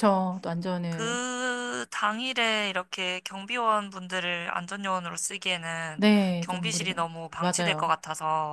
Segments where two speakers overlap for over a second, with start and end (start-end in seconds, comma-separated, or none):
6.0-7.9